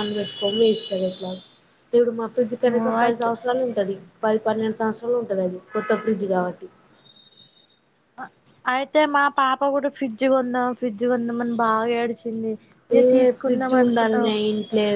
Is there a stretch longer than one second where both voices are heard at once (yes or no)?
yes